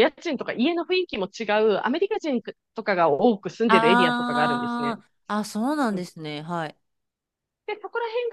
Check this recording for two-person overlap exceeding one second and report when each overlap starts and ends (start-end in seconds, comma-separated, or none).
3.7-5.0